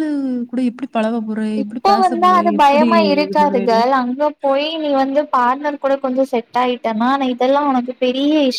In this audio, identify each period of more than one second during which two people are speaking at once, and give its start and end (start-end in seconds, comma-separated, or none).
1.6-3.8